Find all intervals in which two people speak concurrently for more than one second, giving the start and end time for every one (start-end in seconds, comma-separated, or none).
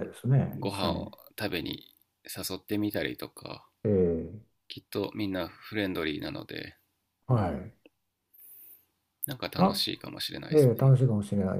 none